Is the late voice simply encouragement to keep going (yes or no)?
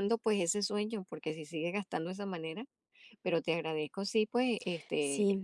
no